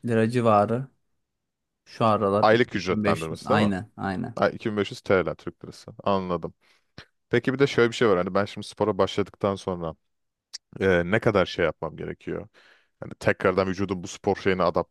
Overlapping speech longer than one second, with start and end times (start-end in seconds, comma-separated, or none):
2.4-3.7